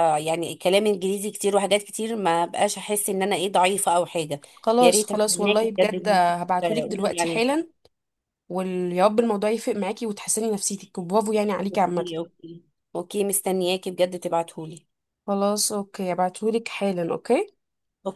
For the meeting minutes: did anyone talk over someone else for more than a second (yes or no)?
yes